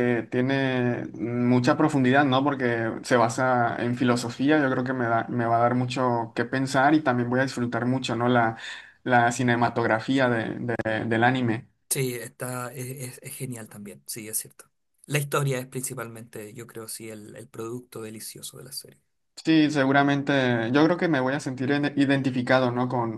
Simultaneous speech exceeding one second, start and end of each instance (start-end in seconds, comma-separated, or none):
none